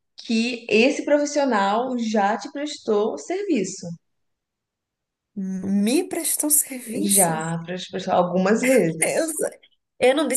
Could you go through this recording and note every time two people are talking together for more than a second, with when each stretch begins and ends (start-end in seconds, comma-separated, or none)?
none